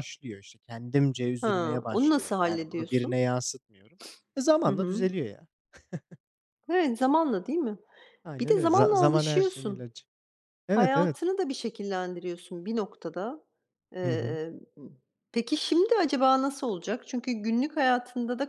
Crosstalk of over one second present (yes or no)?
yes